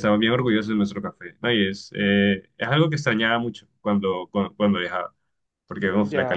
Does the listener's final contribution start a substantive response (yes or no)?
yes